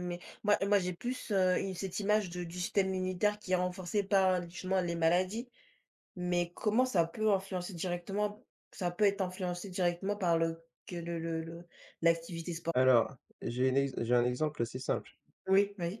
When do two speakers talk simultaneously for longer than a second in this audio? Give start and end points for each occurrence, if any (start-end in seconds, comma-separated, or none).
none